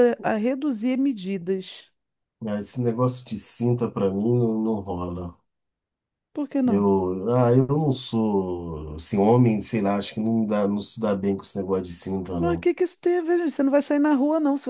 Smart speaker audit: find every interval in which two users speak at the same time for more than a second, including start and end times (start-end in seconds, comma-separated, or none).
none